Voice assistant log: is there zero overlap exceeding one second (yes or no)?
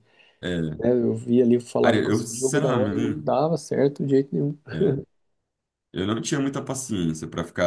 no